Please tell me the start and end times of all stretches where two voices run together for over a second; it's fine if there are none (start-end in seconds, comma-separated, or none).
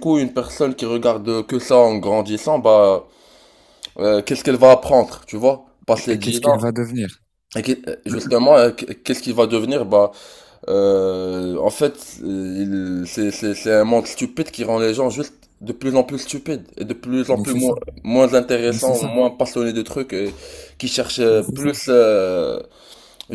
none